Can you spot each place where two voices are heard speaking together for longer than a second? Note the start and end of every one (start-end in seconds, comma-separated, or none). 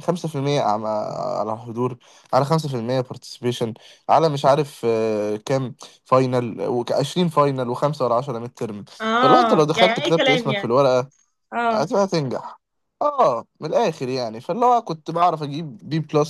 9.0-10.8